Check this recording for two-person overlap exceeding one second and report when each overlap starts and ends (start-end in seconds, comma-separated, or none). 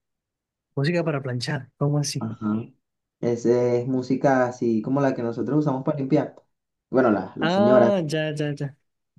none